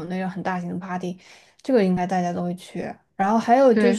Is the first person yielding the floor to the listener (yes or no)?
no